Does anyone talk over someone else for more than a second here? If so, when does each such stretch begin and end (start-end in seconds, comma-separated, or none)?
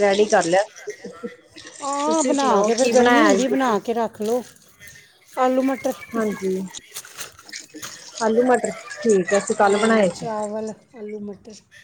2.0-3.8